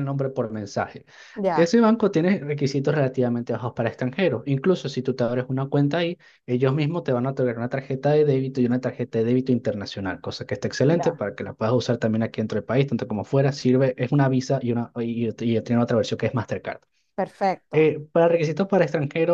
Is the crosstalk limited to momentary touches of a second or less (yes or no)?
yes